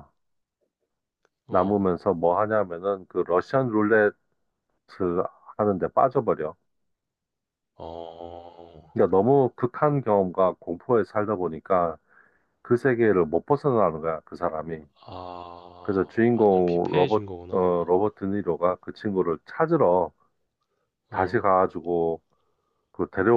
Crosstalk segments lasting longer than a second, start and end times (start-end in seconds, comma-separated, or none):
15.8-18.0